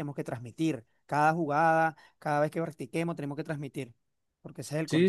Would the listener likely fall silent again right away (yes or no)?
no